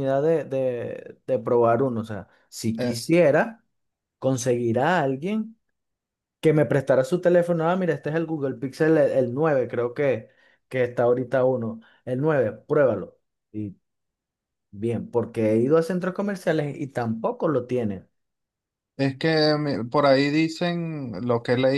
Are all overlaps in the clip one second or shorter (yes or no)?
yes